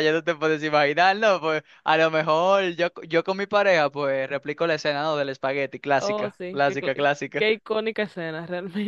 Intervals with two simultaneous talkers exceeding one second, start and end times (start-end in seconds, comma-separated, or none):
6.0-7.5